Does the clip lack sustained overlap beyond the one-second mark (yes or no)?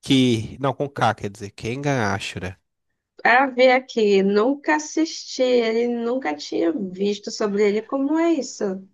yes